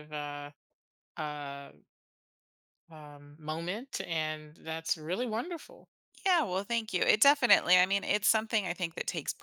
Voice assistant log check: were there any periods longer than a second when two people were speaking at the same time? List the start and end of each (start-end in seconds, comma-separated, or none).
none